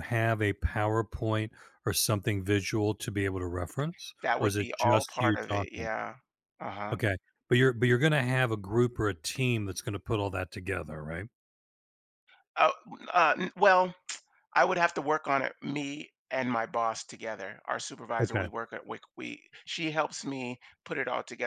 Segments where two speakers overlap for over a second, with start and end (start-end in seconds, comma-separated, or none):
4.2-5.9